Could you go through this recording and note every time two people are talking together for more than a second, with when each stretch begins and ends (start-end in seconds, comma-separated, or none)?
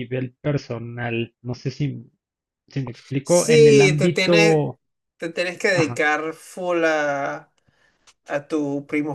3.2-4.6